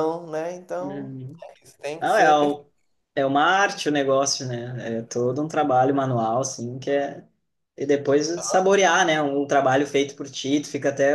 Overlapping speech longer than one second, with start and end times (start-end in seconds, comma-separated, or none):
none